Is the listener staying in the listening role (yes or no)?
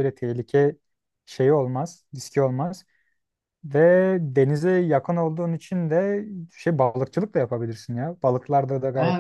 no